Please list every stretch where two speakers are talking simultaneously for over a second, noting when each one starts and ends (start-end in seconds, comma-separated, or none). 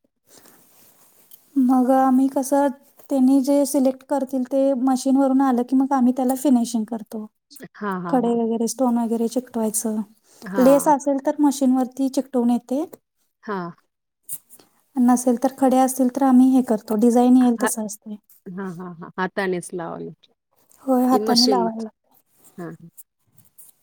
none